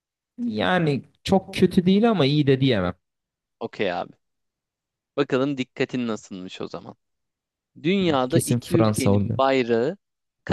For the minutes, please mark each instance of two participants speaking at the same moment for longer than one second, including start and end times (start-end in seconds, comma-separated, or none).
8.1-9.4